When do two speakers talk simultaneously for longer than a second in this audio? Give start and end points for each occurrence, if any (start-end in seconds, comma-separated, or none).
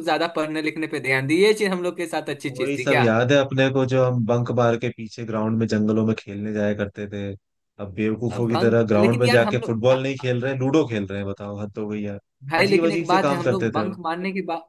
8.3-10.2, 12.6-14.0